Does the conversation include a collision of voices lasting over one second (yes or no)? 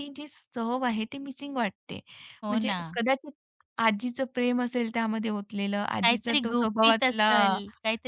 yes